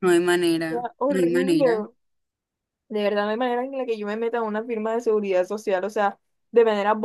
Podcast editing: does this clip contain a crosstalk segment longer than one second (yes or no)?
yes